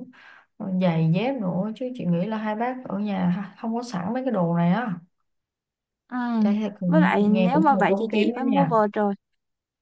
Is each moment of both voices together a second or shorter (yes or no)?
no